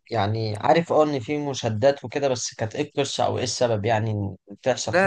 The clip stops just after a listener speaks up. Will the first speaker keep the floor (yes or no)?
no